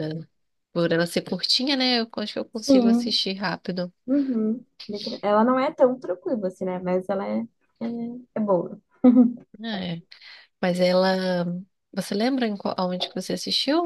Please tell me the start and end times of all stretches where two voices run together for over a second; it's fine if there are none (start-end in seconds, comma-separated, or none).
none